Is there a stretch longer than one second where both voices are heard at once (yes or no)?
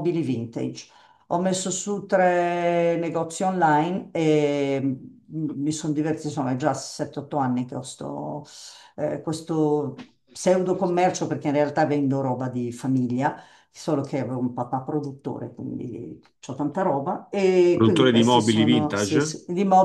yes